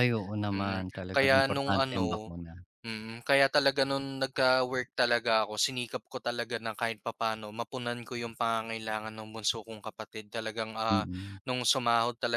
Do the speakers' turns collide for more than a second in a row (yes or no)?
yes